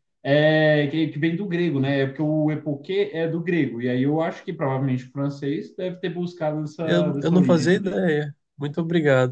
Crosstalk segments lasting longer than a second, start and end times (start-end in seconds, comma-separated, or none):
6.8-8.0